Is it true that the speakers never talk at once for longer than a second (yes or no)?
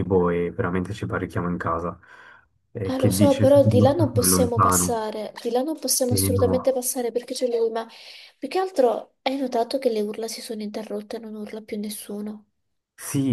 no